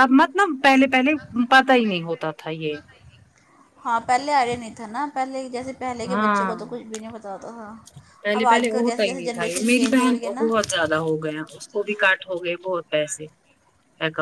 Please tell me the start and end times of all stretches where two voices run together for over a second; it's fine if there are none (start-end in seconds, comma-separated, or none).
8.4-10.5